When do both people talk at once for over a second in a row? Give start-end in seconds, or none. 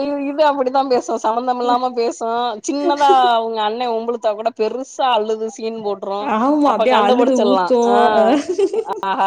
6.7-8.3